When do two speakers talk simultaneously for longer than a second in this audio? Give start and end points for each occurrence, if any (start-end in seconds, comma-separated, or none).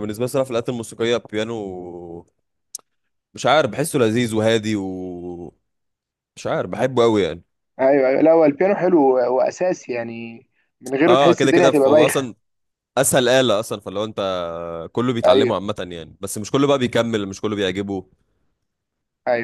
11.1-12.3